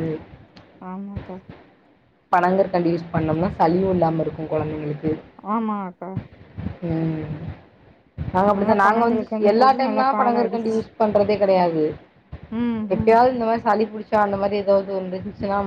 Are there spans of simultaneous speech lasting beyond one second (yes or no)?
yes